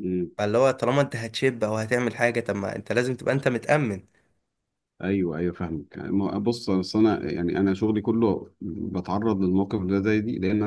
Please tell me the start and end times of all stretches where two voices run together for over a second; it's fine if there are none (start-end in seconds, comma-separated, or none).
none